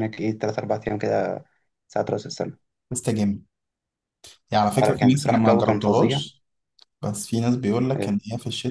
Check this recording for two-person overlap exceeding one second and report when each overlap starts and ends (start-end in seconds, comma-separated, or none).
4.8-6.2